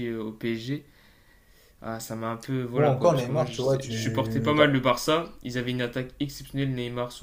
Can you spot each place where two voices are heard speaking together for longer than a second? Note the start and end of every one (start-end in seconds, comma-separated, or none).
2.7-4.7